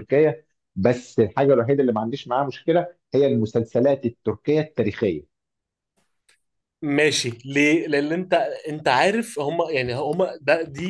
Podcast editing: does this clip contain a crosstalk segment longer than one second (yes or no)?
no